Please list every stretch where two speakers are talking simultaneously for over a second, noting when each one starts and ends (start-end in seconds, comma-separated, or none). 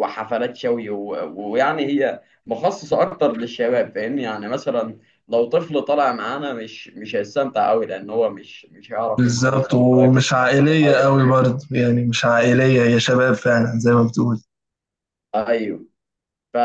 9.2-11.1